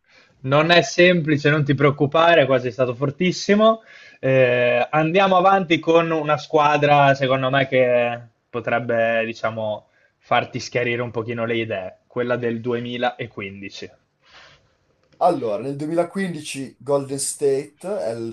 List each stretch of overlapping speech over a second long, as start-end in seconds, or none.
none